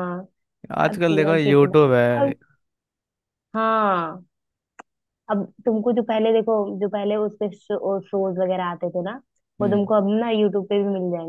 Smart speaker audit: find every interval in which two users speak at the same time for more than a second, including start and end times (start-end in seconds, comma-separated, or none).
0.9-2.3